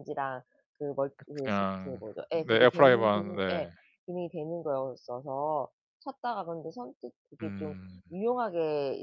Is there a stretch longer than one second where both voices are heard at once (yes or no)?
yes